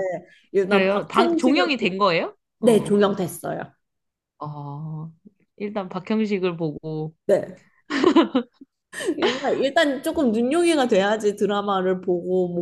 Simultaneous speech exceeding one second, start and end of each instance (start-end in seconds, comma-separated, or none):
0.7-1.9